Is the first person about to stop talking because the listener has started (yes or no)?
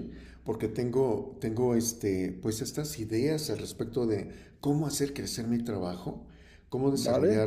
no